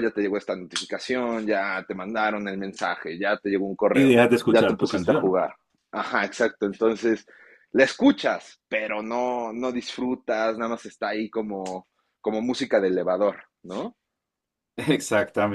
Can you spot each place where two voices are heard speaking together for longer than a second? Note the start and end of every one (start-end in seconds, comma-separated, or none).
3.9-5.4